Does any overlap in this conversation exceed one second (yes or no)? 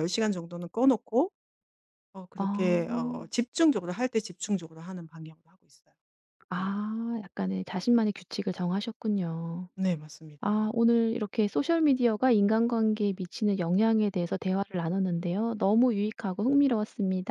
no